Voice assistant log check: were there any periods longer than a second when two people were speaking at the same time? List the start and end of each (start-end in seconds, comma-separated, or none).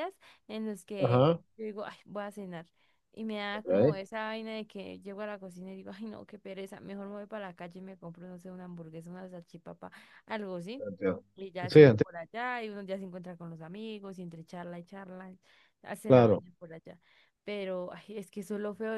none